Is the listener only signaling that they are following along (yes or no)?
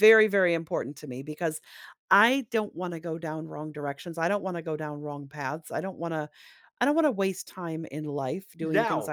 yes